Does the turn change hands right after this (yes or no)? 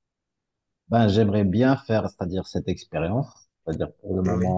no